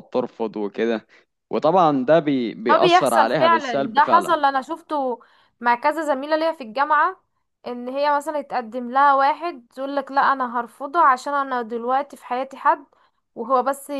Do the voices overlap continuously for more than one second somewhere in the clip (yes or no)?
yes